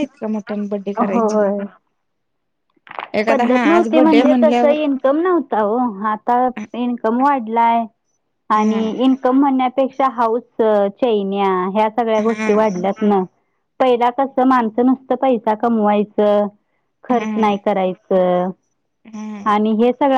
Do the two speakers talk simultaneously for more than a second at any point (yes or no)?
yes